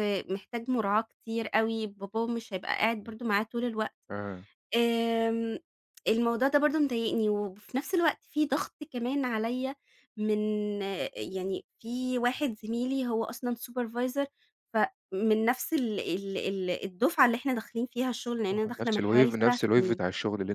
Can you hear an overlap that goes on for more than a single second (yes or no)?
yes